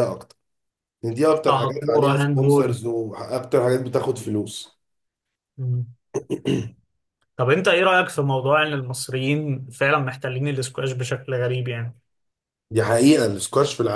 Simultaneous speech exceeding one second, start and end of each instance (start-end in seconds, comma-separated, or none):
1.5-2.8